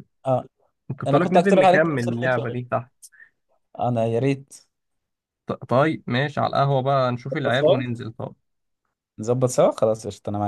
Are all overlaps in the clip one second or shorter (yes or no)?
no